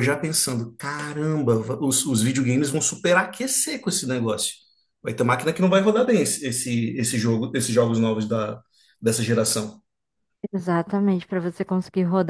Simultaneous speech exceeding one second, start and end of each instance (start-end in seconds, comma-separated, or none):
none